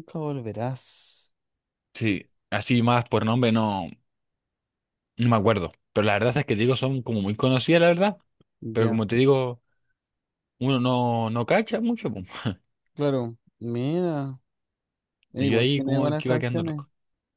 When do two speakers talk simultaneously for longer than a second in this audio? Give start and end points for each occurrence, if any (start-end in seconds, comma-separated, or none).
15.4-16.8